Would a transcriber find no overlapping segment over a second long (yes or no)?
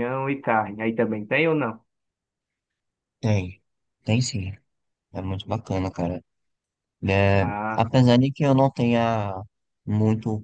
yes